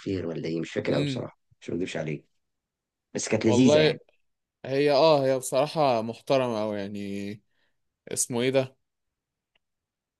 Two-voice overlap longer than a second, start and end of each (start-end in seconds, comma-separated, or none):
none